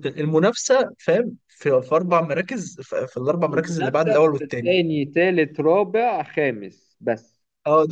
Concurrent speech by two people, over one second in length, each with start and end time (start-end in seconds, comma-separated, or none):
3.5-4.8